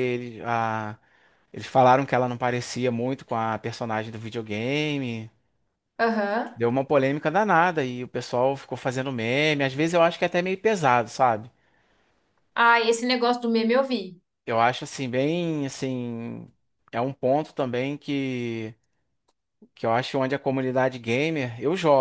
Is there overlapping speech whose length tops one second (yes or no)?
no